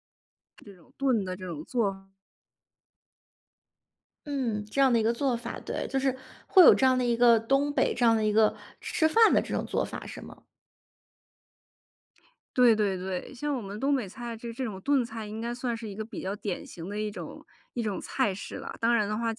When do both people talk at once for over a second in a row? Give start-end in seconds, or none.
none